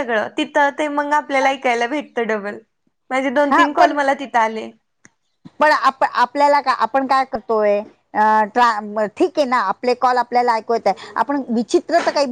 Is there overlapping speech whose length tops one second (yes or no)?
no